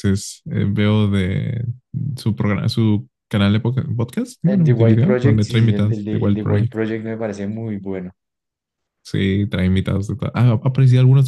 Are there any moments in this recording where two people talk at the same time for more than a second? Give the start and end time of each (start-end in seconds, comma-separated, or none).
4.5-6.8